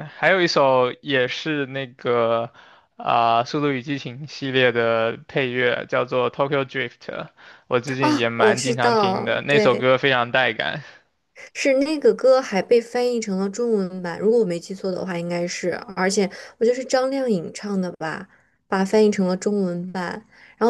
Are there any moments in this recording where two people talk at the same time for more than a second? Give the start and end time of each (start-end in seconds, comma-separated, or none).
8.0-9.9